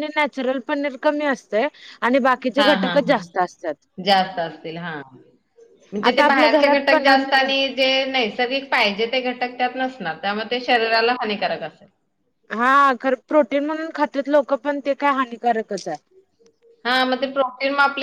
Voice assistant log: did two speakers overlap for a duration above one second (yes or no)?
yes